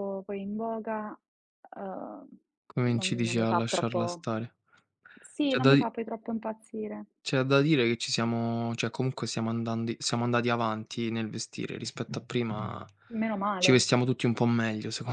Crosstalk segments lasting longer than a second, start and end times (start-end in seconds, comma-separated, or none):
3.0-4.2